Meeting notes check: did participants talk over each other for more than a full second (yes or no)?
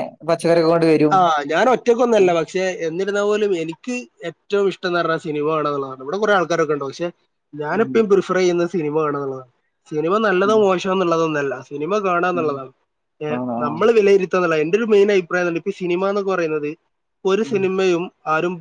no